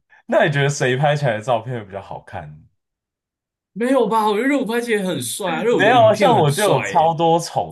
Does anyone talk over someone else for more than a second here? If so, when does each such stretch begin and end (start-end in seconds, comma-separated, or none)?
5.8-7.1